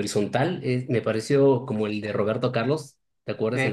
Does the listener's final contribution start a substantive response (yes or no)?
yes